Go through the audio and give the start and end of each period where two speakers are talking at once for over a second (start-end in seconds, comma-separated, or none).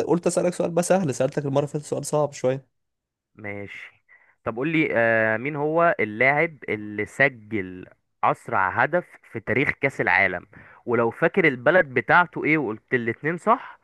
none